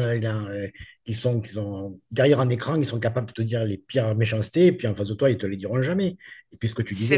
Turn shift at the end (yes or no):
no